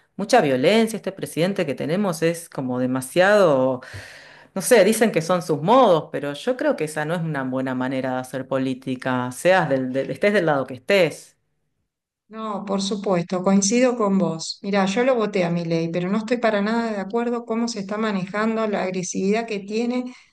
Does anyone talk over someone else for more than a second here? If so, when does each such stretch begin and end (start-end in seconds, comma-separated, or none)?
none